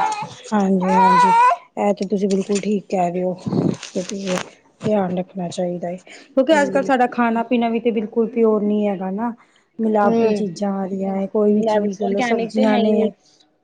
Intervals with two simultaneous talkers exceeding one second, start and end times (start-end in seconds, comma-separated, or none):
11.7-13.1